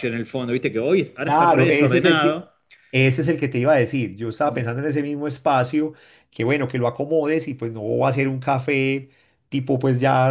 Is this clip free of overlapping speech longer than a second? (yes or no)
no